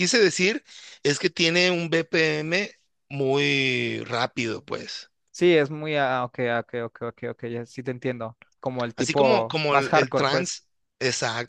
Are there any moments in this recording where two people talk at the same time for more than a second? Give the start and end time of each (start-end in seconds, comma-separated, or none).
9.0-10.5